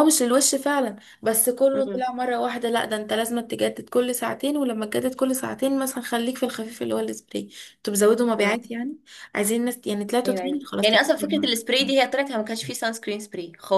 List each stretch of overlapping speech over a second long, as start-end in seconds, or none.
10.2-11.7